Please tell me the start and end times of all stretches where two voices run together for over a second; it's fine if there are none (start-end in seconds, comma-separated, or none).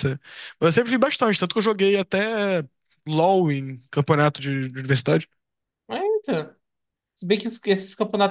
none